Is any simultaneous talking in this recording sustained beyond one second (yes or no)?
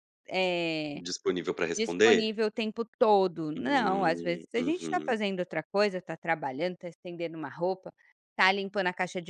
yes